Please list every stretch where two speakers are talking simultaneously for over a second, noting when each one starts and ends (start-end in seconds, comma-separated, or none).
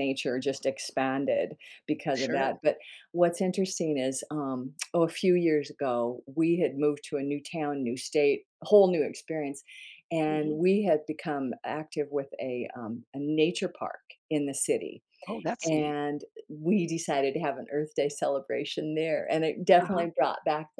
none